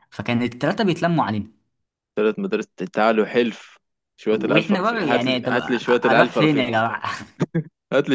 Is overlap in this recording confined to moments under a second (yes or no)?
no